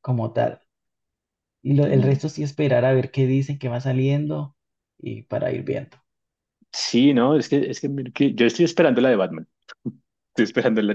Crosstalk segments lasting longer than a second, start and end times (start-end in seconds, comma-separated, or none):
none